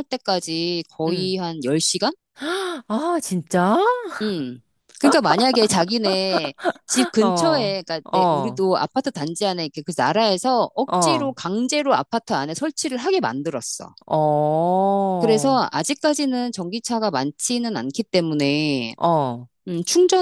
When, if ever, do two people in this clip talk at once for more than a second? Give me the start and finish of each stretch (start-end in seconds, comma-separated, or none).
7.2-8.6